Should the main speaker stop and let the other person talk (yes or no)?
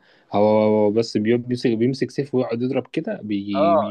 yes